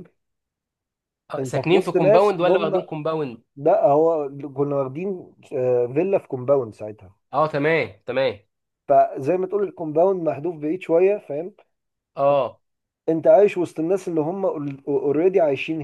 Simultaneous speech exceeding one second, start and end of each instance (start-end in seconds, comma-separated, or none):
1.4-2.8